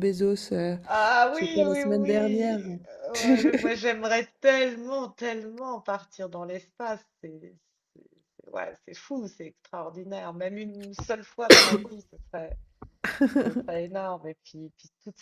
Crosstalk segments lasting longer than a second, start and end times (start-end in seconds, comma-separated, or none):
1.3-2.6